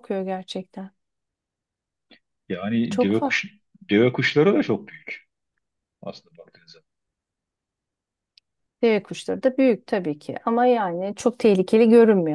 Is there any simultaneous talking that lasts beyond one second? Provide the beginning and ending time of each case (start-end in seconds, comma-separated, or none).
none